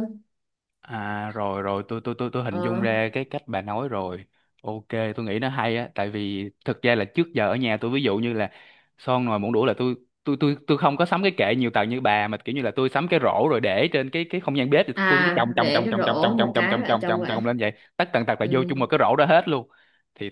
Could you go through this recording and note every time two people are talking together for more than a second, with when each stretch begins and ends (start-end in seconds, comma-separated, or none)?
14.9-17.4